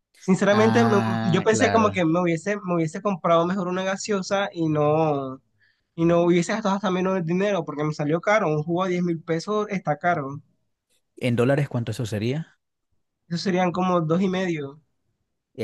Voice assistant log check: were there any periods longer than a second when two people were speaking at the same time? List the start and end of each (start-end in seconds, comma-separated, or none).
0.5-2.0